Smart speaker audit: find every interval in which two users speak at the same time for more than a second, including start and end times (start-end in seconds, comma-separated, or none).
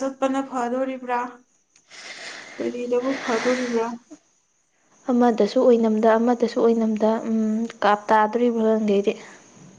none